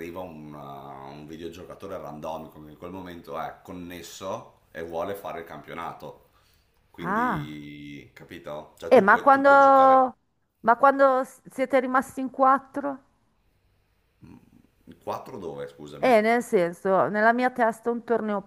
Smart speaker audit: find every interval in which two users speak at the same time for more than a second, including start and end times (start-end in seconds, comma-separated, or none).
8.9-10.1